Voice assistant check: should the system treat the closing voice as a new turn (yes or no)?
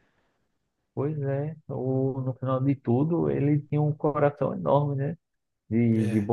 no